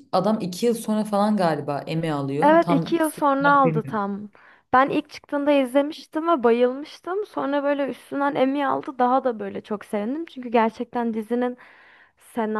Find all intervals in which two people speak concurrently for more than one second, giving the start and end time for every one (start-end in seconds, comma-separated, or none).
2.4-4.0